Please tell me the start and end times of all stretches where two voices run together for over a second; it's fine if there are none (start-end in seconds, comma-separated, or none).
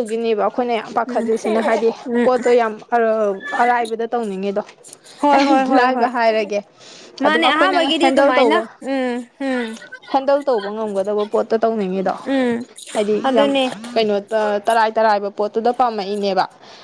7.3-8.6